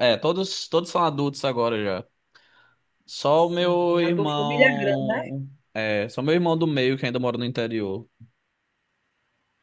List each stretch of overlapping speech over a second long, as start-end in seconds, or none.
3.4-5.2